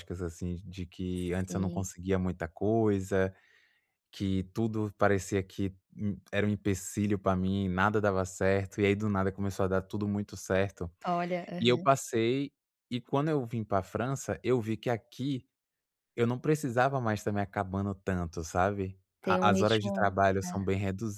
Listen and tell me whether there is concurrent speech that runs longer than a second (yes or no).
yes